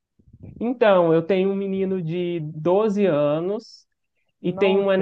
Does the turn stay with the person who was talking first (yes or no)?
yes